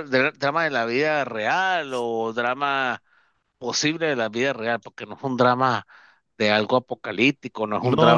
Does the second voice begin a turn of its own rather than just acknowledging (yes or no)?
yes